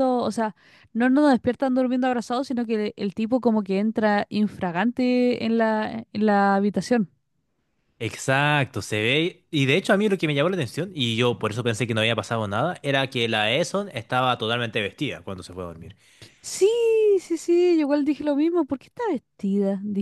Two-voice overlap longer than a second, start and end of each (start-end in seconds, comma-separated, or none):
none